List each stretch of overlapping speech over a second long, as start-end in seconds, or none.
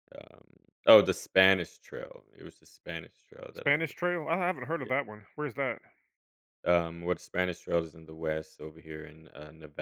none